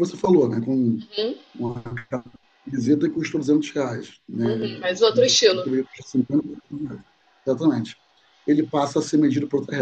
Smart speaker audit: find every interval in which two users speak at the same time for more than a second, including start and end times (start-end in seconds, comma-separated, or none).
4.4-5.7